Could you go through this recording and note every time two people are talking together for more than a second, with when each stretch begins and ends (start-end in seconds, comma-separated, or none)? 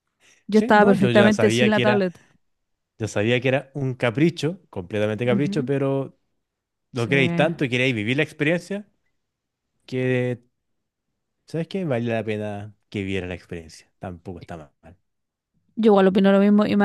0.5-2.1